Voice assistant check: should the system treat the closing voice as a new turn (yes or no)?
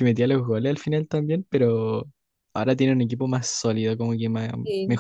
no